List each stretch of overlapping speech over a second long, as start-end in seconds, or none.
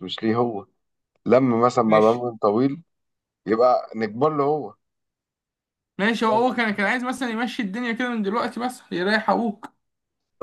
none